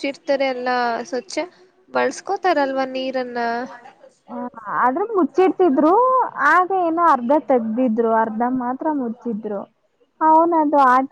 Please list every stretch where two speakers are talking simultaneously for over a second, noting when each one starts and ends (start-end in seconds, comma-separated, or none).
none